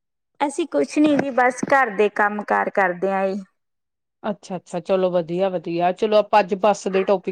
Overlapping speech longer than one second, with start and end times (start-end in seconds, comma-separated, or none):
none